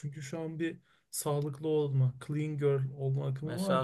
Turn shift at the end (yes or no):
yes